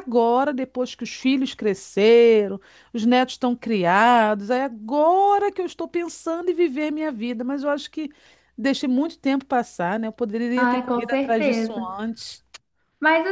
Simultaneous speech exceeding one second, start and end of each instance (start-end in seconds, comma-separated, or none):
10.6-11.9